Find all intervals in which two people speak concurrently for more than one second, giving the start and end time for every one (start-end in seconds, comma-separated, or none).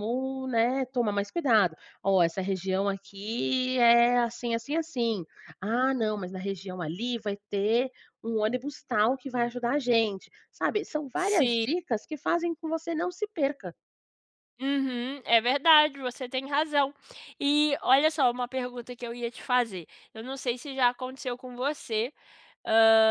none